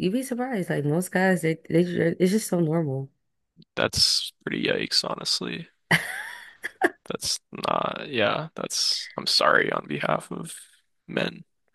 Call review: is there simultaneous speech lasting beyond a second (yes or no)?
no